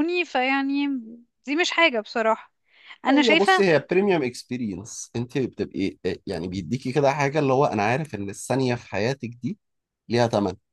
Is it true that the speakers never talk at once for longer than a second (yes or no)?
yes